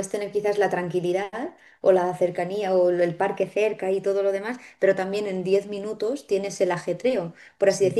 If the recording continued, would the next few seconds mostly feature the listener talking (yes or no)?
no